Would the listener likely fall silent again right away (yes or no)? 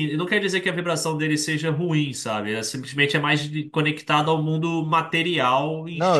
no